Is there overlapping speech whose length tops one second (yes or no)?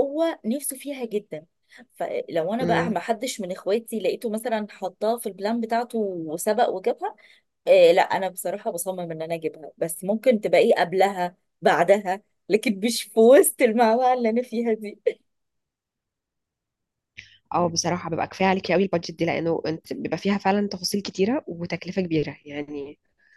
no